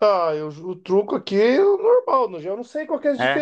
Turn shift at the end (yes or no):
no